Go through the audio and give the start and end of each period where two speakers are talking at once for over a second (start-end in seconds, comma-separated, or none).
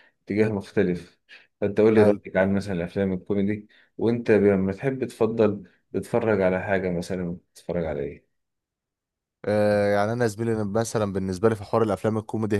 none